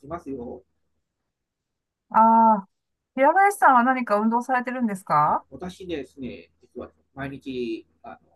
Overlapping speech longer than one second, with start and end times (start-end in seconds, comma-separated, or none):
none